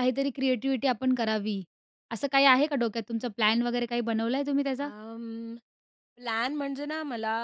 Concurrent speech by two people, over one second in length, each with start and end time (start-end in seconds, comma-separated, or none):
none